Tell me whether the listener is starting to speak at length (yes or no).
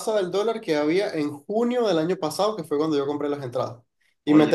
no